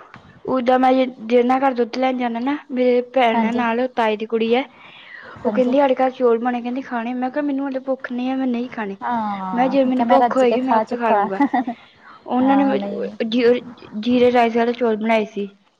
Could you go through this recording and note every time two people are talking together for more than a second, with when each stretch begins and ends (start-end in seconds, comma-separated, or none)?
9.6-11.3